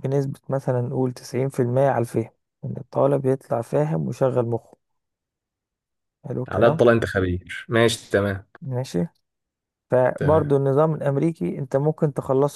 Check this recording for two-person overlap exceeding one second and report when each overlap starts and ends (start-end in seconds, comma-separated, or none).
none